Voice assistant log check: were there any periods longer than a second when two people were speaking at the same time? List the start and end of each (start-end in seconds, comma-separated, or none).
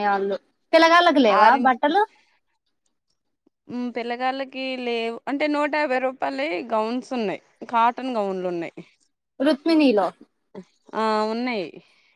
none